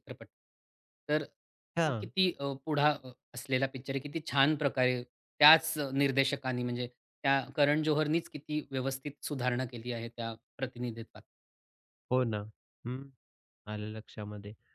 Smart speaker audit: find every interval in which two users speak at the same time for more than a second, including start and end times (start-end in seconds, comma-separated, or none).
none